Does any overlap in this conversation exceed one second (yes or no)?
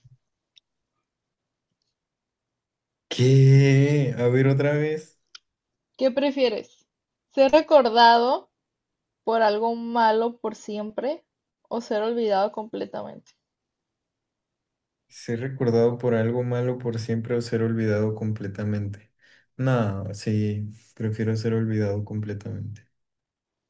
no